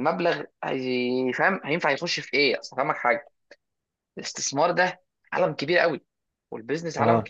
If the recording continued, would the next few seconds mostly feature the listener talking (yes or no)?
no